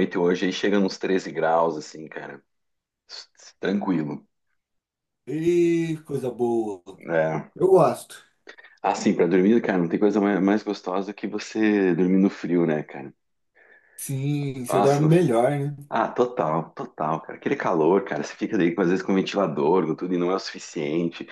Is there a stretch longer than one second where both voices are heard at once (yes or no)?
no